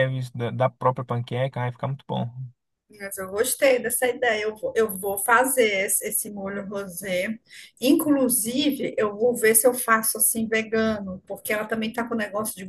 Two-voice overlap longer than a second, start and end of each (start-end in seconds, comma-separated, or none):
none